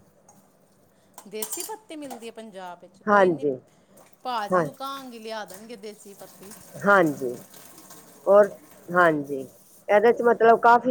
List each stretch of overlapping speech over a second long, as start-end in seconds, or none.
none